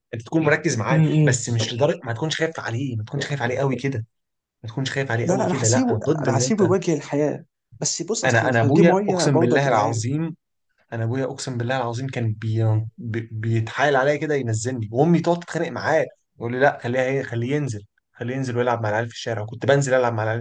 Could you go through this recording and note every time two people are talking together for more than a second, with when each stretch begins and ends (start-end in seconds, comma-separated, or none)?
5.2-6.7, 8.2-10.0